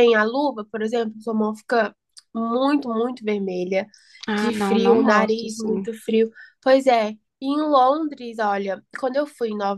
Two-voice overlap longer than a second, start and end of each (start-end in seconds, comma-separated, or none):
4.4-5.9